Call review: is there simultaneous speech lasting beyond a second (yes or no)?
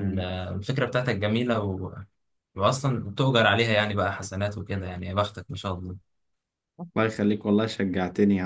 no